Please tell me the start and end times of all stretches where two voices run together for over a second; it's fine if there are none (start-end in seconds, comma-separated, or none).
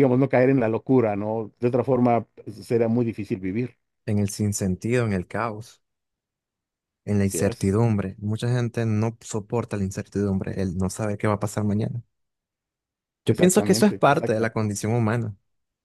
13.3-14.6